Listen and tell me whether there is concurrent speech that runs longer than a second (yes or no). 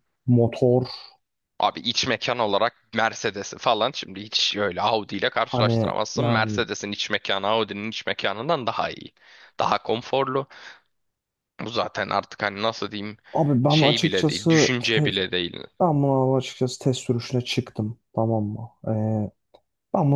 yes